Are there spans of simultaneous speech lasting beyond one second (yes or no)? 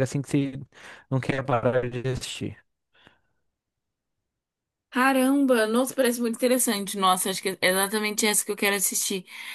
no